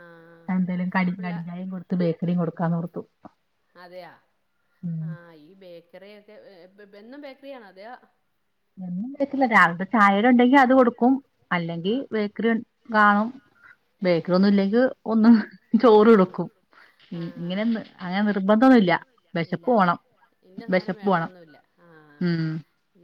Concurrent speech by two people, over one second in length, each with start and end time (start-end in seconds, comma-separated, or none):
none